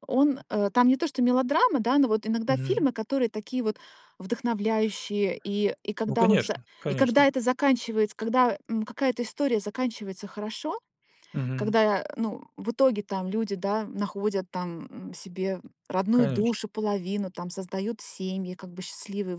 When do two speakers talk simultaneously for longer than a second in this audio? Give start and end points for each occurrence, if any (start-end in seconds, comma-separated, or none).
6.0-7.3